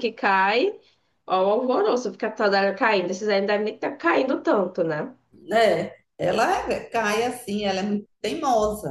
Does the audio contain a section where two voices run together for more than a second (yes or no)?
no